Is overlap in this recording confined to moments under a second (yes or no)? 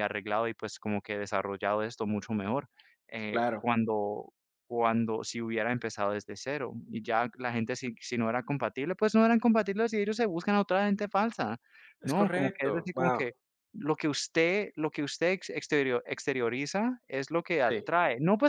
no